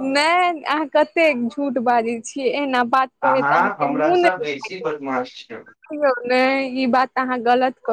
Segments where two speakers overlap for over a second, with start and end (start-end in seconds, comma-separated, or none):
3.3-4.9